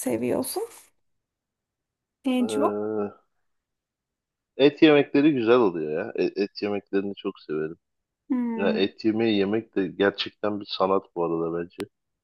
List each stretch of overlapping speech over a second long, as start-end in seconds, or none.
none